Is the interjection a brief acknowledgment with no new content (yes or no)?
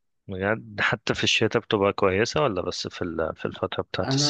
no